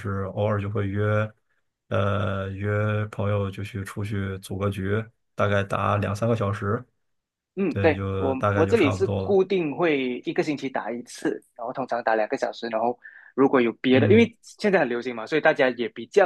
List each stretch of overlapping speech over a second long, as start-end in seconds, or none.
7.7-9.4